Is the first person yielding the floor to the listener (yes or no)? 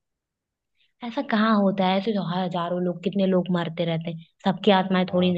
yes